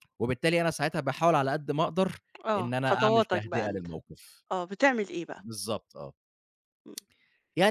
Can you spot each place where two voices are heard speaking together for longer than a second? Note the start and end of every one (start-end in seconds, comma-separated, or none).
2.6-3.9